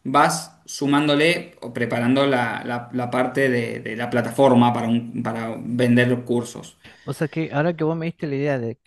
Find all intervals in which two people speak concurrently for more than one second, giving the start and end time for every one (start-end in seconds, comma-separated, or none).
none